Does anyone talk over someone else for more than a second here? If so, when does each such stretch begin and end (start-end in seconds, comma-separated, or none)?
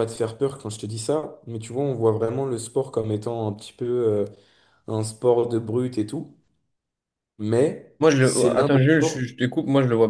8.0-9.2